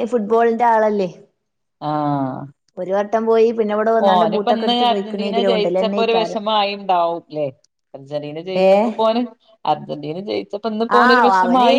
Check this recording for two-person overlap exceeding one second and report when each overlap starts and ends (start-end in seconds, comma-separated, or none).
4.1-6.4